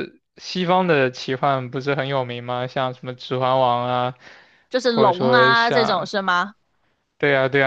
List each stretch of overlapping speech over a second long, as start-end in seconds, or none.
4.8-6.1